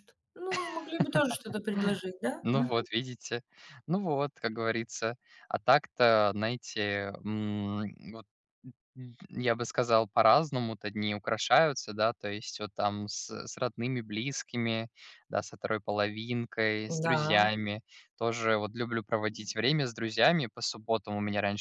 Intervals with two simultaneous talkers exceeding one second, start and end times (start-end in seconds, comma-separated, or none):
none